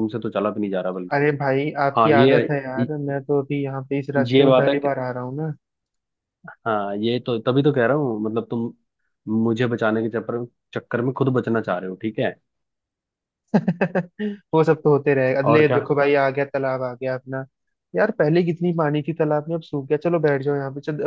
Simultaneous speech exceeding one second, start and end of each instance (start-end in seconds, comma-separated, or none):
none